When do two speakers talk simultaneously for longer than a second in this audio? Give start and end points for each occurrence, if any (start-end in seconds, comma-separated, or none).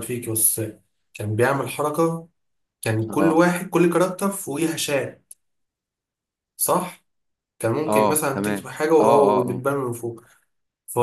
7.9-9.6